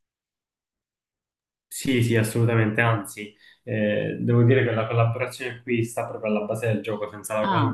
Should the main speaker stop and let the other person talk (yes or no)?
no